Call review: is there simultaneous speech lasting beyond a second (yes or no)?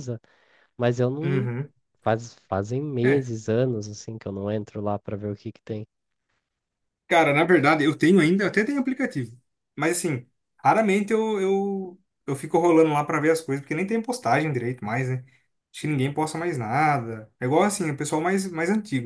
no